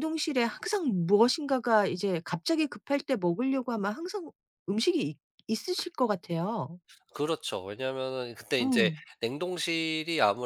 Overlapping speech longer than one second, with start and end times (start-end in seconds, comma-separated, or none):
none